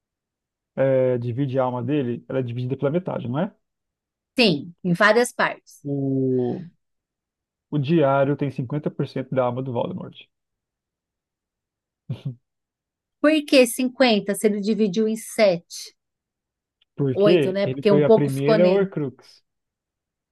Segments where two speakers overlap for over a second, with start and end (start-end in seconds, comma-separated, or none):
17.1-18.9